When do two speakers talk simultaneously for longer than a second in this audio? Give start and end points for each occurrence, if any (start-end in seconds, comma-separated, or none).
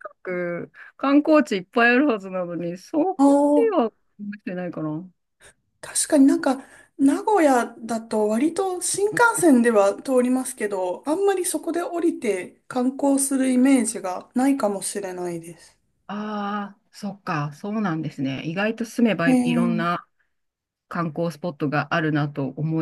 none